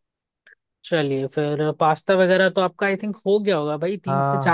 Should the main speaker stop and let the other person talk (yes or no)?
yes